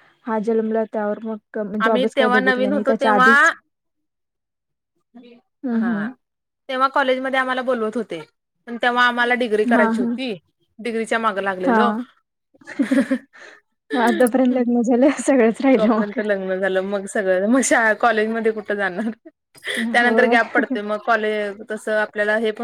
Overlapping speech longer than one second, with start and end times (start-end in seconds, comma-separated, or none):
1.9-3.5